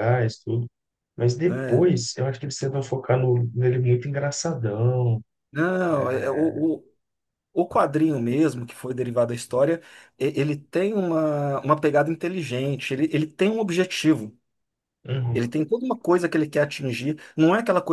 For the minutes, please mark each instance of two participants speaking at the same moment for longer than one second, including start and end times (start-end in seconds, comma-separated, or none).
none